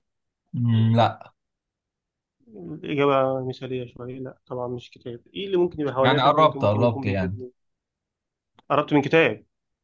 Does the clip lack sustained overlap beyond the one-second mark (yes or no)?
no